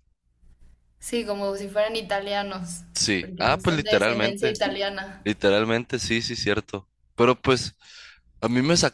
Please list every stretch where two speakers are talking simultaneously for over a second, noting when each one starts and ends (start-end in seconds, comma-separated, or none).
3.2-4.6